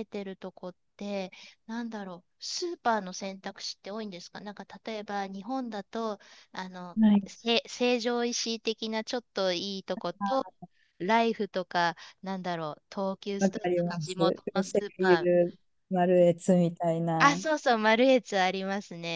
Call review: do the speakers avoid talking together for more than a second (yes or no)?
no